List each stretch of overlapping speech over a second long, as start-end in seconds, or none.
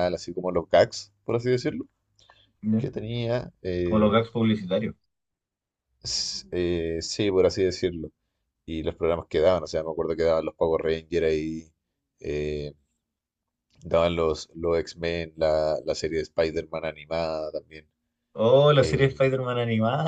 none